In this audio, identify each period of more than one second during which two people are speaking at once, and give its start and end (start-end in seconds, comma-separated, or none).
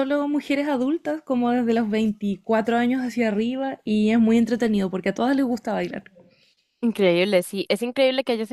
none